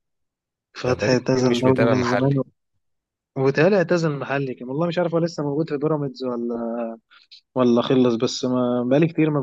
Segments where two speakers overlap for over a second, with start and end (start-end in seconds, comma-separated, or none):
0.9-2.3